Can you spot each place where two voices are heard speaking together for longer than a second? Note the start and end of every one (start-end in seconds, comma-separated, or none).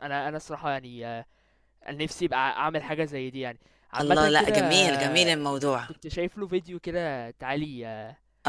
4.0-5.4